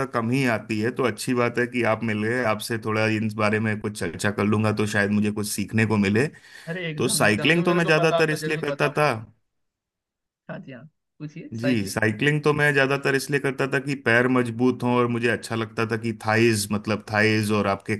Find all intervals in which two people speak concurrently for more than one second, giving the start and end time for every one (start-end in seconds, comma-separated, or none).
7.0-9.1